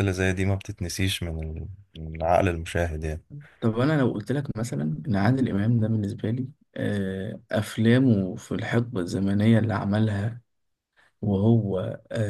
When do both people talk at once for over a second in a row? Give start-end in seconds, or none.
none